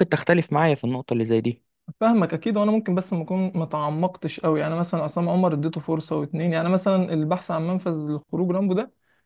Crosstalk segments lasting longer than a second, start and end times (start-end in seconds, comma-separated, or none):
none